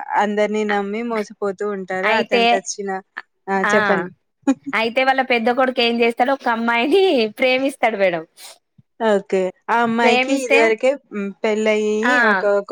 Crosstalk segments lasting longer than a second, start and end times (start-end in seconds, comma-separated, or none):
none